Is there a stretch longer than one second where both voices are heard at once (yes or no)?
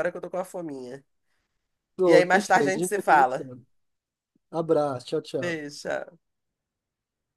yes